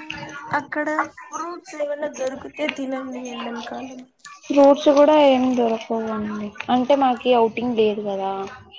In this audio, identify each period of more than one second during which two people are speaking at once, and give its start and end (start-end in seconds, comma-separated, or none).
none